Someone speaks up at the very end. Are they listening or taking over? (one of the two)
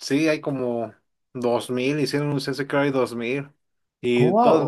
taking over